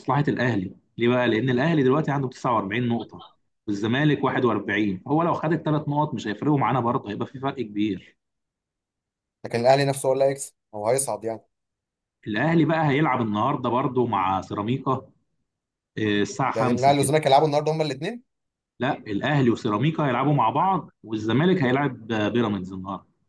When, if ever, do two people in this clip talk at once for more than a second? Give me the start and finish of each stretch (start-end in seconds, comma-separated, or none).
none